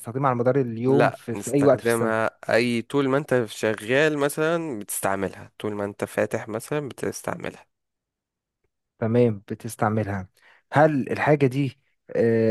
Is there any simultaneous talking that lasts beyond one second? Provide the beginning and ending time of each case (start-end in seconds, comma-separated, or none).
0.9-2.3